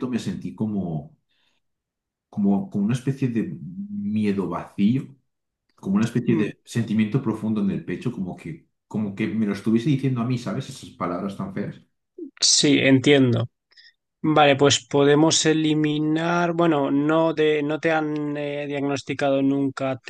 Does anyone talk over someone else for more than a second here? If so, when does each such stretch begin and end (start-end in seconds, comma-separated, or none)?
none